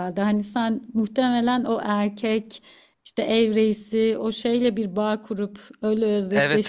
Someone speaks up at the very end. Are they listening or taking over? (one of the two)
taking over